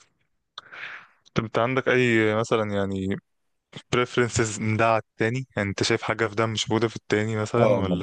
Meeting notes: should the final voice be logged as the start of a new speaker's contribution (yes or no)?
yes